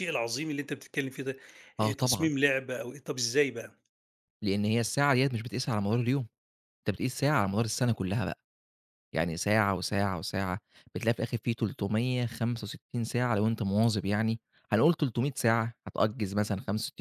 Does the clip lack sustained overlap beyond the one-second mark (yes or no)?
yes